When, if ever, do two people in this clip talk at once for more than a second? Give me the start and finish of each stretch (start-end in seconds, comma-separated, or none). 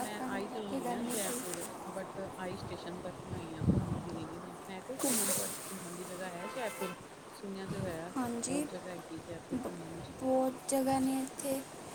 none